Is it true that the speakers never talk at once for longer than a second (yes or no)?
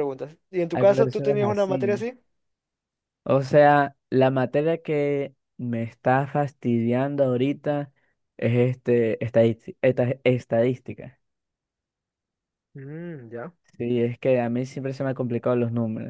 no